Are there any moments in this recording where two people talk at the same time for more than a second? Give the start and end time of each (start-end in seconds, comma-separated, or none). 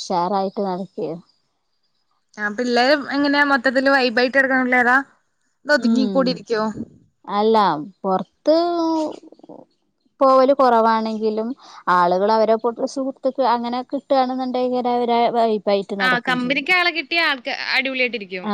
none